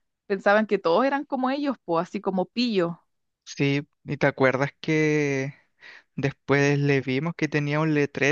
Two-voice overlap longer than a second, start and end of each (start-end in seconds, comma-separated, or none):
none